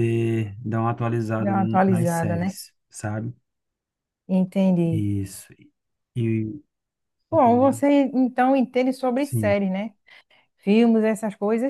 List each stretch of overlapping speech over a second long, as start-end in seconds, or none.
1.4-2.6